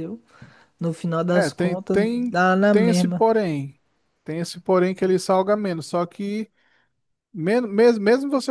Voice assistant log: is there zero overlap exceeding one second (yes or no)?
no